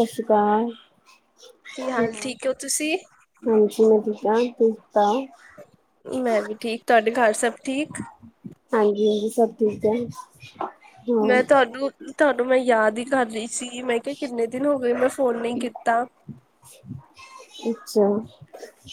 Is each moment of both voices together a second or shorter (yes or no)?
yes